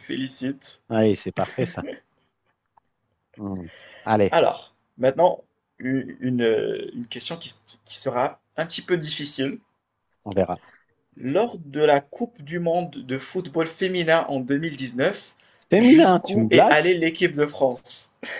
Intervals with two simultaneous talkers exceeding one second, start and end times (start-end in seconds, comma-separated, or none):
15.7-17.0